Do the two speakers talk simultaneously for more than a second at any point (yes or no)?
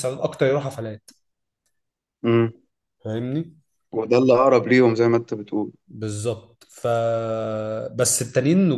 no